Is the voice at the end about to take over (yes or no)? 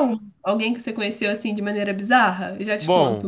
yes